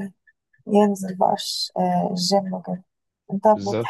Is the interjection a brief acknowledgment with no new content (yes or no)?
yes